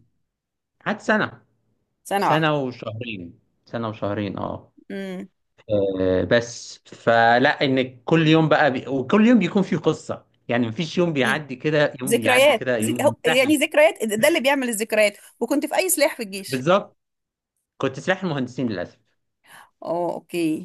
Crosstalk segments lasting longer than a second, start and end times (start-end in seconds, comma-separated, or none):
12.1-13.6